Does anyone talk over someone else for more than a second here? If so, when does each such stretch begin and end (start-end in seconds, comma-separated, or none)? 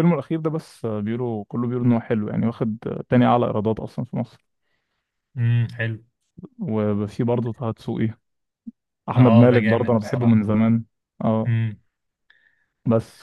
9.2-10.4